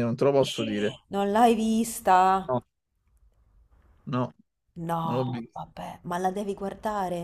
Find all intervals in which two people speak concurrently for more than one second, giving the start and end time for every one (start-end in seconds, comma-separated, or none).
none